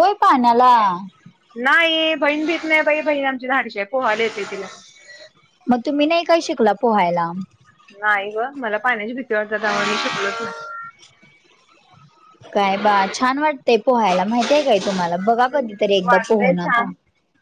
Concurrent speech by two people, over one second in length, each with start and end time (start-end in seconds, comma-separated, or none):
15.5-16.9